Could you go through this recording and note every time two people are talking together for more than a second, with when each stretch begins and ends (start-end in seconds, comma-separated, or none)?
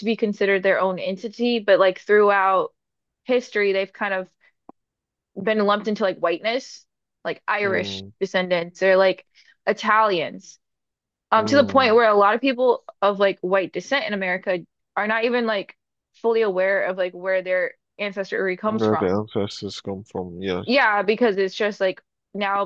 none